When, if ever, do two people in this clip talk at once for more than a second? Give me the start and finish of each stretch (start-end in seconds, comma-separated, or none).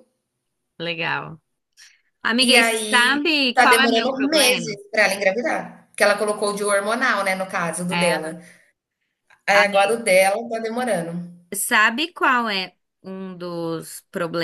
2.4-4.8